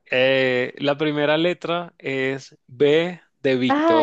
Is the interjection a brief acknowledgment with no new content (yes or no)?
no